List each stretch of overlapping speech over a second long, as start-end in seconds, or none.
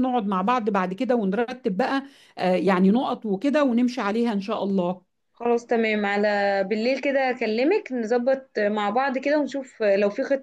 none